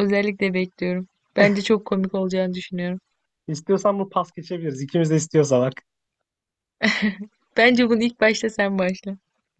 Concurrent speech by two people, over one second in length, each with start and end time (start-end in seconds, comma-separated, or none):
none